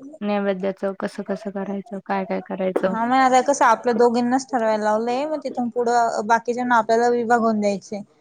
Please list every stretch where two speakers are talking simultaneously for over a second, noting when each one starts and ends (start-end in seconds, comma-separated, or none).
none